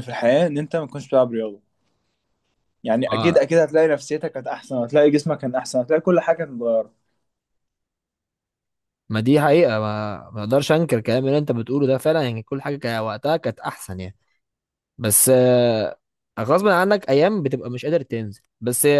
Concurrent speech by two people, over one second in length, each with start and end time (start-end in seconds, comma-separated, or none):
none